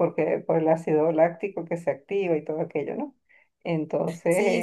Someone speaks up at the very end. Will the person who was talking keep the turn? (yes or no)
no